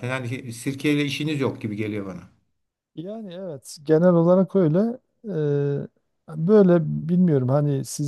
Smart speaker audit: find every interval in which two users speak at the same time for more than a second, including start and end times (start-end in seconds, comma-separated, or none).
none